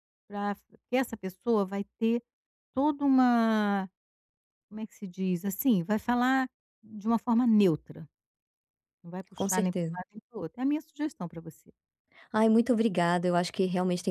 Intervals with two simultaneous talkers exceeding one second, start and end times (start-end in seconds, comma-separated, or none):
none